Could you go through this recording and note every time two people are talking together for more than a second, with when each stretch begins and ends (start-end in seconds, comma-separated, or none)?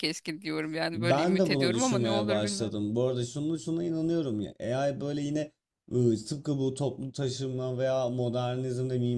0.9-2.8